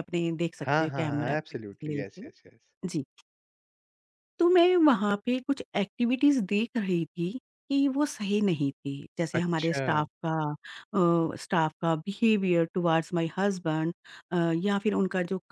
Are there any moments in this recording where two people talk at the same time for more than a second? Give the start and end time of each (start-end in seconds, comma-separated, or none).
0.7-2.3